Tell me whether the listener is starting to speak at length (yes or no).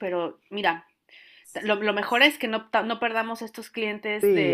yes